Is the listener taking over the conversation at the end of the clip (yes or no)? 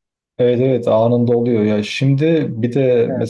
no